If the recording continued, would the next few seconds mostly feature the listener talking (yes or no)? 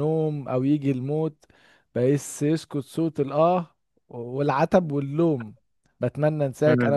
no